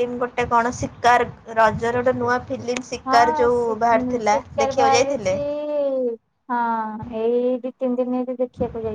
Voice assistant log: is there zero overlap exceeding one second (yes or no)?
no